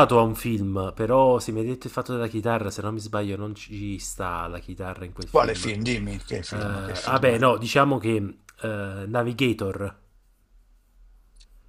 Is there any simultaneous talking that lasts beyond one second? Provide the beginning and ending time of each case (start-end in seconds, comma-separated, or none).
5.3-7.3